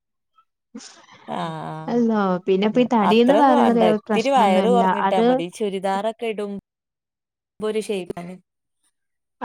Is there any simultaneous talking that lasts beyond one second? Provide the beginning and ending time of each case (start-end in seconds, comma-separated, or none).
3.1-5.3